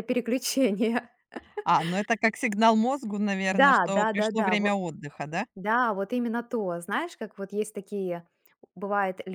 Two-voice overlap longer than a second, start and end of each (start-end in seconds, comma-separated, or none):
3.5-4.7